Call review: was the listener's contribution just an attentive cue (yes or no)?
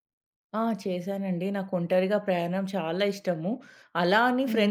yes